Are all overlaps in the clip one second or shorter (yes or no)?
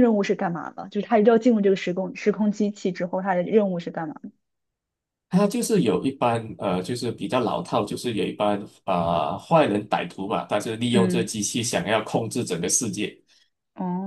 yes